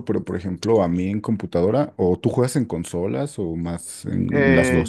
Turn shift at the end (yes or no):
yes